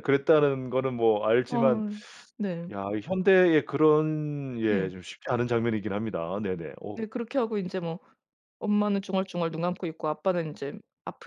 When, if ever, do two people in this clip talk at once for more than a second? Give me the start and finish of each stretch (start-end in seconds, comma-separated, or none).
none